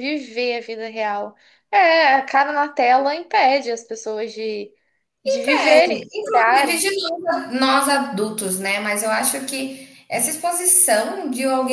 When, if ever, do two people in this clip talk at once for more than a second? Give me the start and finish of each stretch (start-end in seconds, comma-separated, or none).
5.4-6.8